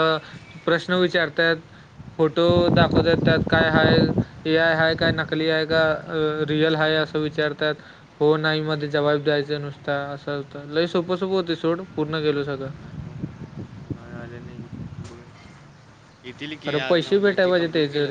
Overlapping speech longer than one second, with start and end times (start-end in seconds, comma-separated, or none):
none